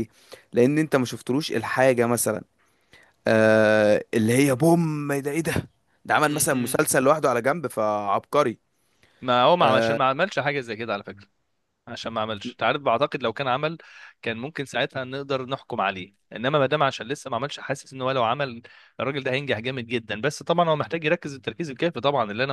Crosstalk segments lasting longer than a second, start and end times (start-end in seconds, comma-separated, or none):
none